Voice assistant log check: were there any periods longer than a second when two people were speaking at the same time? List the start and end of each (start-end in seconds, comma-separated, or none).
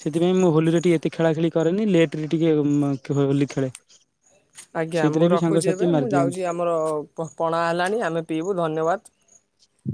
5.0-6.4